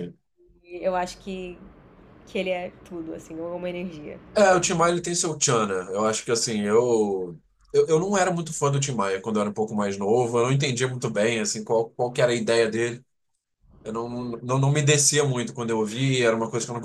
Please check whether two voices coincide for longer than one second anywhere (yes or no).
no